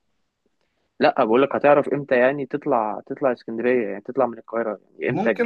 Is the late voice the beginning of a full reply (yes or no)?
yes